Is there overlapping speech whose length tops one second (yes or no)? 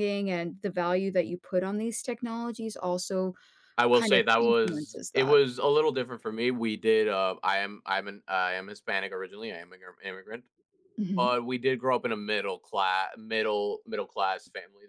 yes